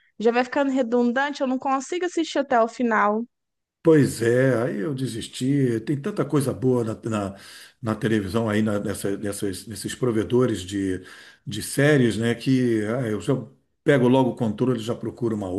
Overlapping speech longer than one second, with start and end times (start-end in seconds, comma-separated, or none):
none